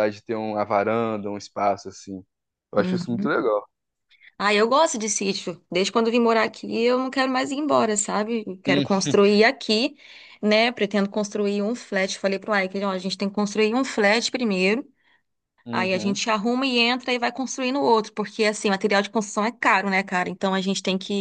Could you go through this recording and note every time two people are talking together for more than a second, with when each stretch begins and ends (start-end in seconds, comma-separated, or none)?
none